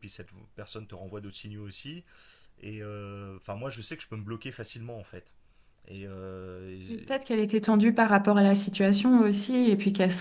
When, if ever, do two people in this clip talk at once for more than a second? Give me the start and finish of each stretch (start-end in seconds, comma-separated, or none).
none